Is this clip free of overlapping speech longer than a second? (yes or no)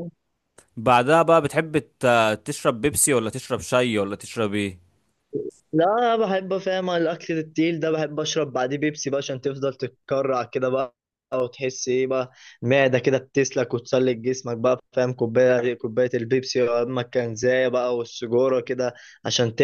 yes